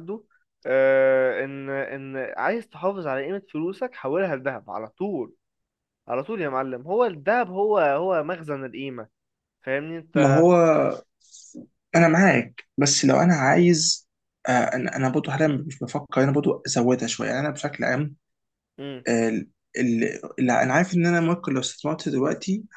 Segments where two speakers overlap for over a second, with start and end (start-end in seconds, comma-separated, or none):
none